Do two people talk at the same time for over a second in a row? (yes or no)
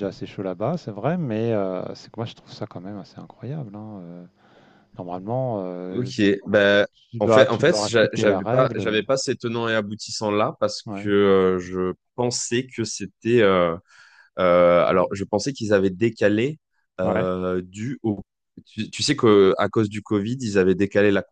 yes